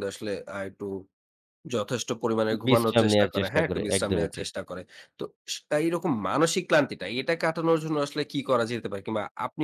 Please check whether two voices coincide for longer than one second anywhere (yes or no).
yes